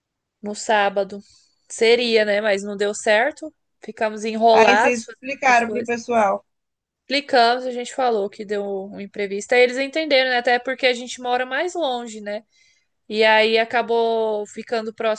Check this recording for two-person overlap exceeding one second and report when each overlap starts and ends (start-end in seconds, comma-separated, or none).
4.5-5.9